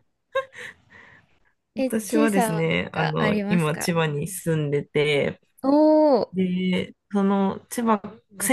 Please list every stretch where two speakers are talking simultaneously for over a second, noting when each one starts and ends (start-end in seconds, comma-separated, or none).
1.8-3.9